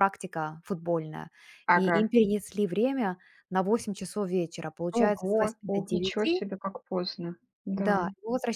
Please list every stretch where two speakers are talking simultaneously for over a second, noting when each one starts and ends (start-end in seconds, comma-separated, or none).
5.0-6.4